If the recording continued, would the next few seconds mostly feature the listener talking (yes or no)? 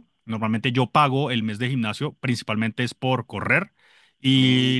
no